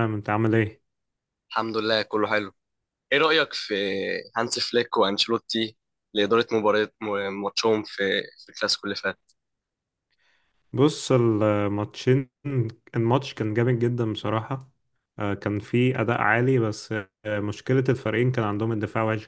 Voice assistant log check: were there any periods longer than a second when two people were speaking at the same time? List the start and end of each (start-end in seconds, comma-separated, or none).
none